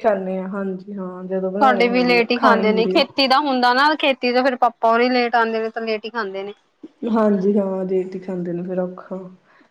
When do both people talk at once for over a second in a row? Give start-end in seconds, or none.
1.6-3.0